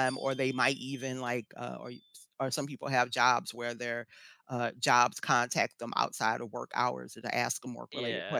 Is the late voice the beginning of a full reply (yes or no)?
no